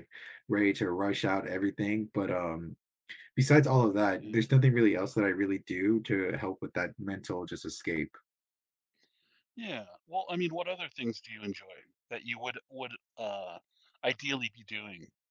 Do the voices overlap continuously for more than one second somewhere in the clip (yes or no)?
no